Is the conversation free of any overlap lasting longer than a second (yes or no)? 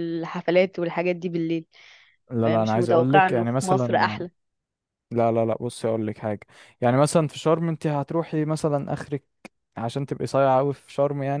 no